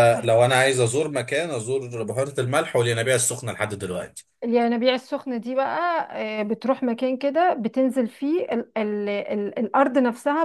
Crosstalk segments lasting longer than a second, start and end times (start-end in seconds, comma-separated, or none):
none